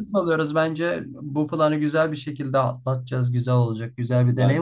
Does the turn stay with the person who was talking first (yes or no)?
yes